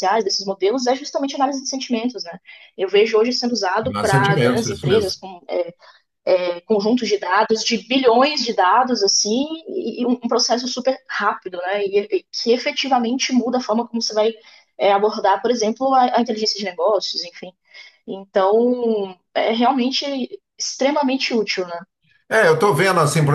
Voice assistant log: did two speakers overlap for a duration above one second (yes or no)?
yes